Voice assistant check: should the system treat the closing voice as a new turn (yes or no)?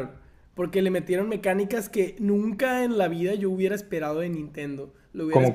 no